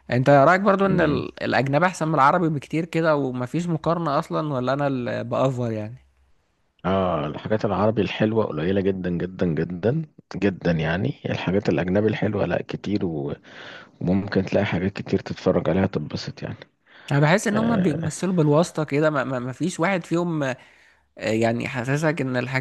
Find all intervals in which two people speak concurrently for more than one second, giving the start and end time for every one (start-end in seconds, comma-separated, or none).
none